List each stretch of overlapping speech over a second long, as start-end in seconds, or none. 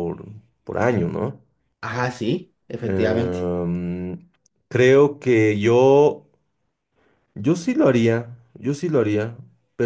none